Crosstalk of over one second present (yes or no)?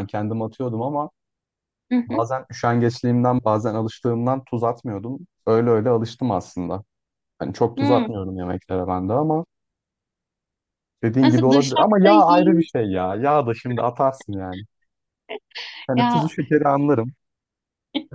yes